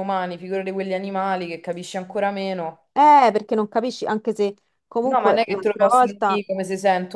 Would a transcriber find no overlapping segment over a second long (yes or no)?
no